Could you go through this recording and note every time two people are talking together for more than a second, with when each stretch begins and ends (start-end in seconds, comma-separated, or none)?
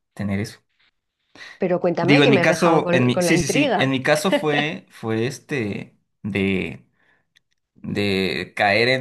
2.0-3.9